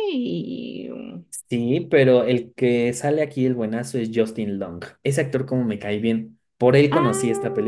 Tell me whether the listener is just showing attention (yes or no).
no